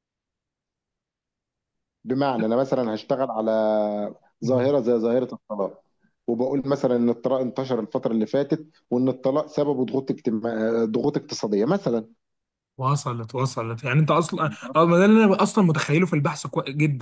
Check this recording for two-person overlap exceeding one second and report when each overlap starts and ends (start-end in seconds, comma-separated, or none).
none